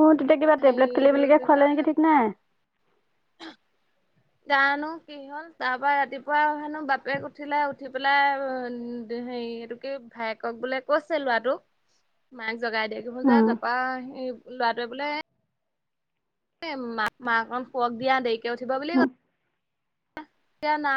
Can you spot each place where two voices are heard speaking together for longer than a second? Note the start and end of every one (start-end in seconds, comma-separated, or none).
none